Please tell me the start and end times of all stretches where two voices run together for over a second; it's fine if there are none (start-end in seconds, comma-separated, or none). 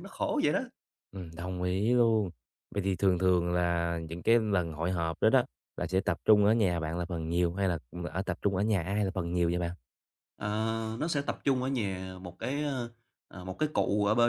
none